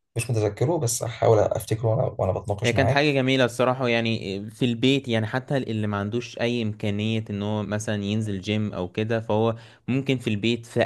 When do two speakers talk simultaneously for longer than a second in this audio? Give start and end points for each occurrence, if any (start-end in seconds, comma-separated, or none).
none